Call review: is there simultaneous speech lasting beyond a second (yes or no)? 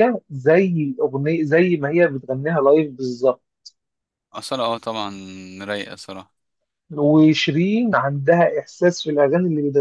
no